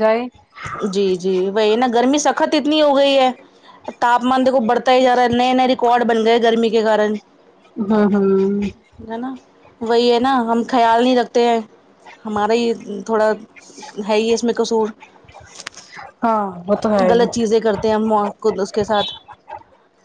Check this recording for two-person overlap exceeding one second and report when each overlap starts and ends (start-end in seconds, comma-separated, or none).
none